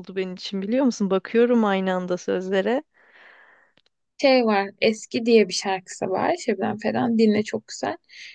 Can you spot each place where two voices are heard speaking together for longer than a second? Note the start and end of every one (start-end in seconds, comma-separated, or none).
none